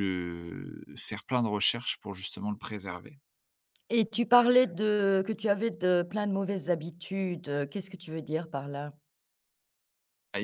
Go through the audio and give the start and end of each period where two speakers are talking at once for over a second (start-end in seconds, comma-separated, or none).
none